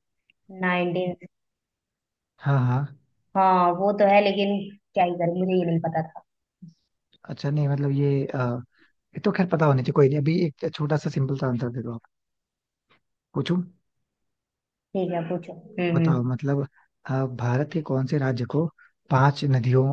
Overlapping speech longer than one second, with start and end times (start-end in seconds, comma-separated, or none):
none